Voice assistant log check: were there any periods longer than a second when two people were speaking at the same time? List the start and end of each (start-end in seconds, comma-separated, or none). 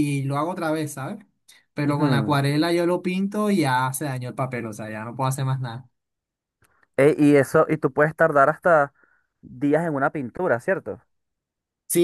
none